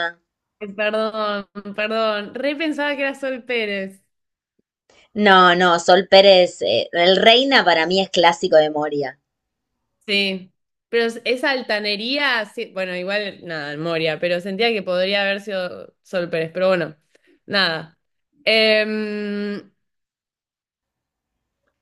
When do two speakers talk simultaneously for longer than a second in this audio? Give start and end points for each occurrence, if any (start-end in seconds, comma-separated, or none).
none